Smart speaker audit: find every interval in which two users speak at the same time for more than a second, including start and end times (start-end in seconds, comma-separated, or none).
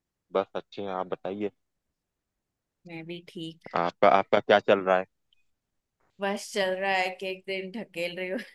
none